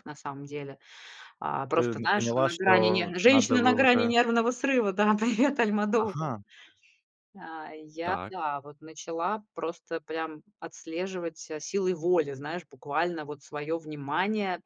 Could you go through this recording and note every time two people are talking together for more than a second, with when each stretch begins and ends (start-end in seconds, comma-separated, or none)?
1.8-4.1